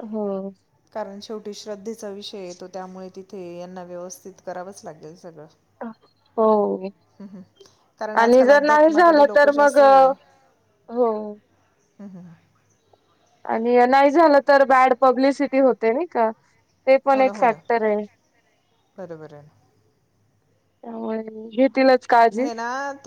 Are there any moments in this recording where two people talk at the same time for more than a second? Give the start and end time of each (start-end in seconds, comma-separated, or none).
8.2-9.8